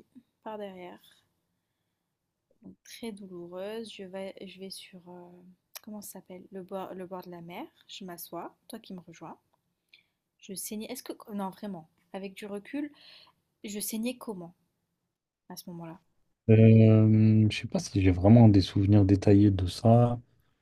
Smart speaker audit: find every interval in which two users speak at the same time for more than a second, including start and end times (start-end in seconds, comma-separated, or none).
none